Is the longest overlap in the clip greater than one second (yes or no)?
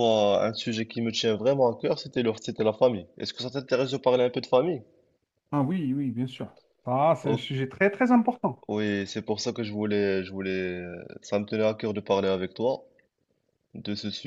no